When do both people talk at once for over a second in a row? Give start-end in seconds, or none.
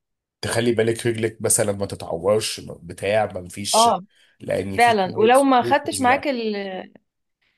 4.8-6.2